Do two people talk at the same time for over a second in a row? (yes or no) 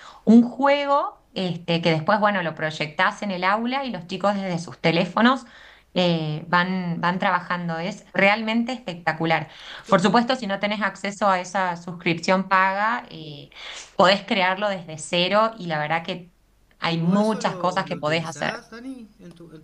yes